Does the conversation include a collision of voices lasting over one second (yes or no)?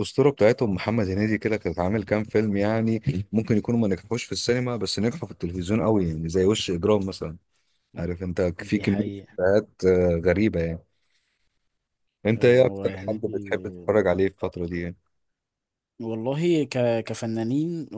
yes